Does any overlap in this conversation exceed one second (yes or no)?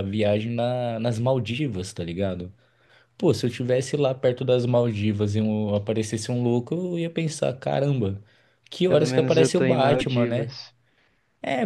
yes